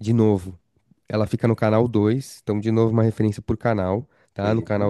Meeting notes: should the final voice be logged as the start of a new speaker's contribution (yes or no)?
no